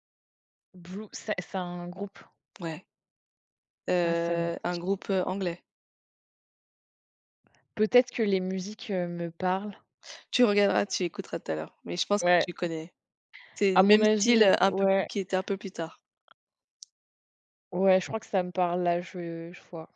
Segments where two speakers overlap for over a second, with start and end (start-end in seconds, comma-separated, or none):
13.7-15.1